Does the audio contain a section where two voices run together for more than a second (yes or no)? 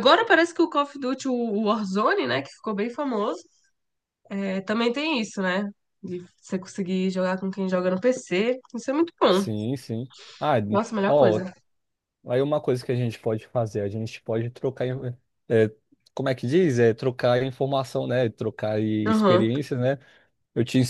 no